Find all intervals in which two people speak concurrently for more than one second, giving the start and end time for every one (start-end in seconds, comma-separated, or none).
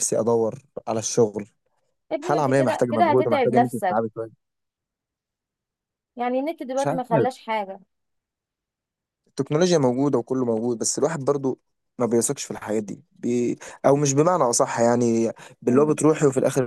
2.2-4.0